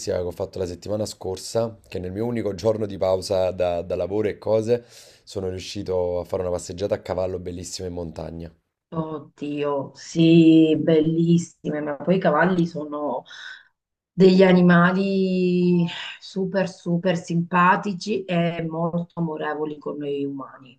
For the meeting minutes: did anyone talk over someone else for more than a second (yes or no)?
no